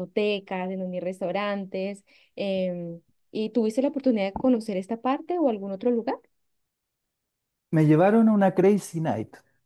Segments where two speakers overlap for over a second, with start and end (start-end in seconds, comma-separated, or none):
none